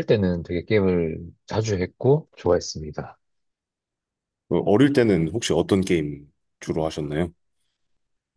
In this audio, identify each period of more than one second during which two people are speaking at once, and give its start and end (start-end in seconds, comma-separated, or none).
none